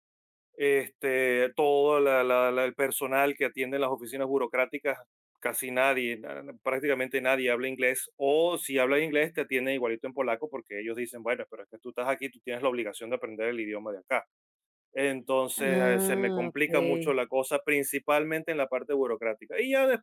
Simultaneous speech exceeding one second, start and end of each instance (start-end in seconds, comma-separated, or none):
15.6-17.2